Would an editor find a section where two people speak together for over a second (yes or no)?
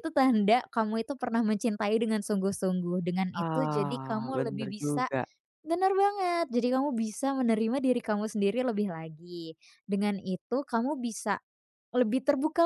yes